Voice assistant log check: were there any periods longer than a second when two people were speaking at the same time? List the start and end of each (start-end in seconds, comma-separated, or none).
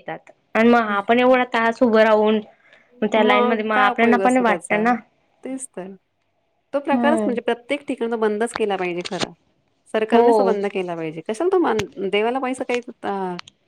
3.2-4.8